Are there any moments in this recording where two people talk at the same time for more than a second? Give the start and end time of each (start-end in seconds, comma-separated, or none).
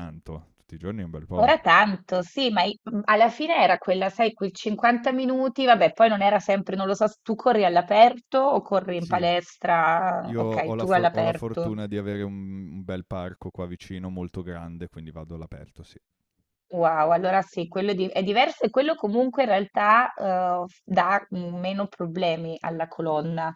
10.2-11.7